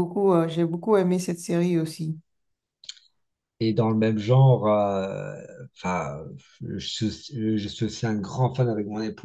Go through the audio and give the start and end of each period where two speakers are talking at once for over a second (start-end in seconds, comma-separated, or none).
none